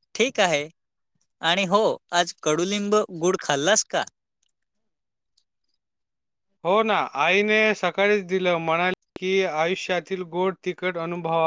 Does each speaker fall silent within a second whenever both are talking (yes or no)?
yes